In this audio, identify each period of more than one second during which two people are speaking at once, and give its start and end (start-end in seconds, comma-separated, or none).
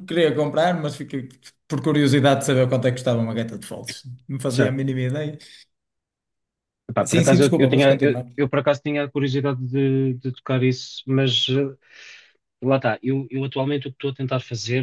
7.0-8.3